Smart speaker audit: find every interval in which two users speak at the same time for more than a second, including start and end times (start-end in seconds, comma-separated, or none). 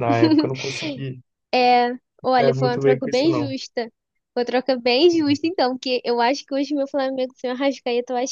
2.2-3.5